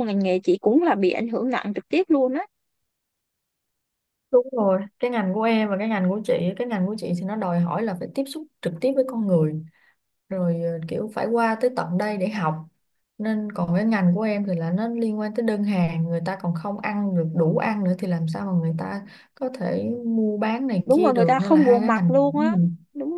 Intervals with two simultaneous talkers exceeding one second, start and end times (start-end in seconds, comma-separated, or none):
20.9-22.6